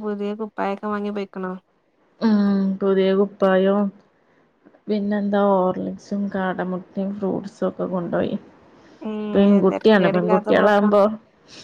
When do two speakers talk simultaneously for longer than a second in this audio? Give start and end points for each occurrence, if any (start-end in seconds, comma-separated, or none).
9.3-11.0